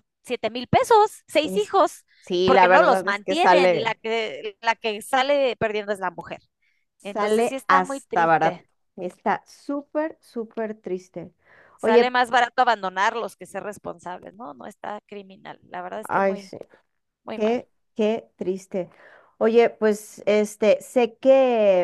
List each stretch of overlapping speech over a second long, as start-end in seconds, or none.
2.4-3.9, 7.0-8.7